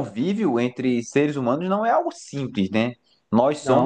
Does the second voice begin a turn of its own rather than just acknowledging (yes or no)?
no